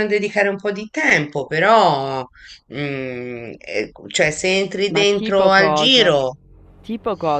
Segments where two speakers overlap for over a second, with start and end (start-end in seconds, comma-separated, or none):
4.9-6.2